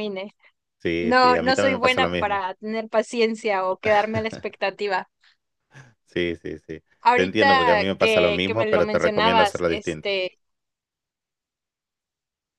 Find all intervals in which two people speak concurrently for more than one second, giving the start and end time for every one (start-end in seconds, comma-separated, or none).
1.0-2.4, 7.0-10.1